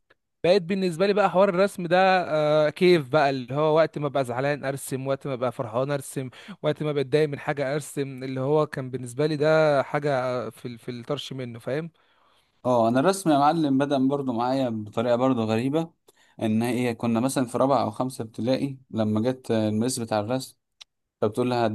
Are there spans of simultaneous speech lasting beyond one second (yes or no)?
no